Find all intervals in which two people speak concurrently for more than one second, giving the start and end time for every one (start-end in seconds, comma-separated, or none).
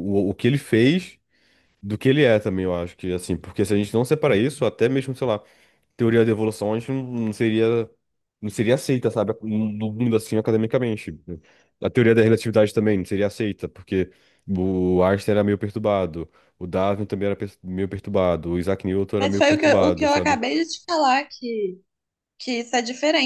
19.2-20.4